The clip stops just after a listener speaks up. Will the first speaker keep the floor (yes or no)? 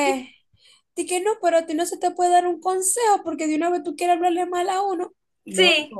no